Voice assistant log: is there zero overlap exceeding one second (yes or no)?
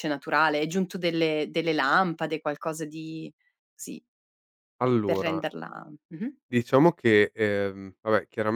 yes